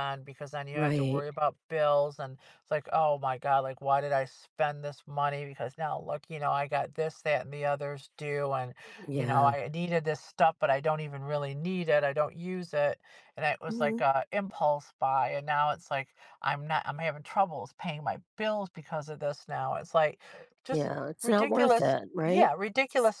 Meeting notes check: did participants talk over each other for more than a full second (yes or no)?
yes